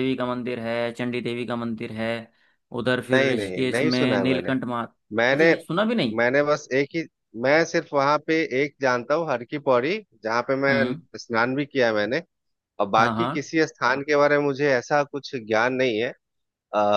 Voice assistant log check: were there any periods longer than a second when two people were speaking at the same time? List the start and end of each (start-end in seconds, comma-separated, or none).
3.1-4.5